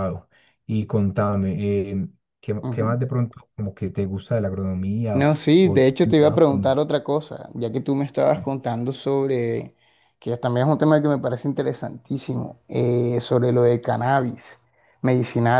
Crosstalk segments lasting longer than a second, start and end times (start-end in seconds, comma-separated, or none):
5.1-6.8